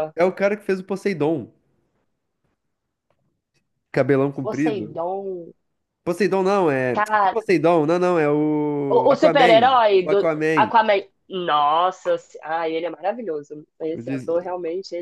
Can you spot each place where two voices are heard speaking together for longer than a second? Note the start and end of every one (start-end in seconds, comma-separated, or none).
8.9-10.7